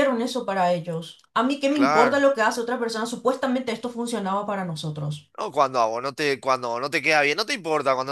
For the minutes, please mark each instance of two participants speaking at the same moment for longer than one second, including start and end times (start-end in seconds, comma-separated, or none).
none